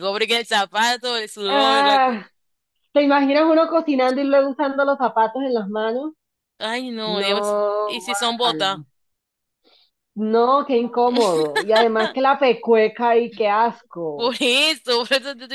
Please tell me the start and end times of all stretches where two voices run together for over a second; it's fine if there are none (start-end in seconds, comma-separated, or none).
7.0-8.8